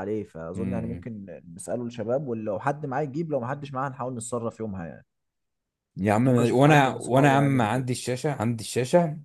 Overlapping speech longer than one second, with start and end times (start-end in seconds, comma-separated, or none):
6.2-7.8